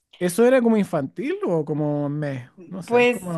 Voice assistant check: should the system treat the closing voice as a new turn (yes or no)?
yes